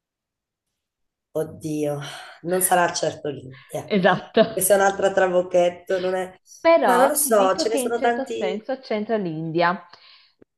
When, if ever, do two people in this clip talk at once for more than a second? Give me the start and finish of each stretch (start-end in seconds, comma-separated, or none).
6.8-8.6